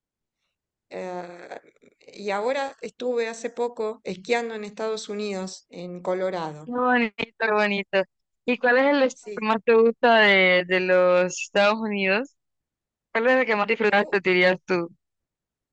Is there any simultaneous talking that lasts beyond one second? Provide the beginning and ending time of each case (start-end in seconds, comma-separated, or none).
none